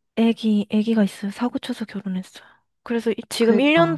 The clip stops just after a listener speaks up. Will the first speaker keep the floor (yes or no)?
yes